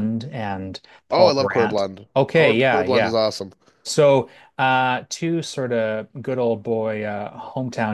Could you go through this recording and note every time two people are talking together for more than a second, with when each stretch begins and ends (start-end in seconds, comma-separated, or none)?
1.1-3.1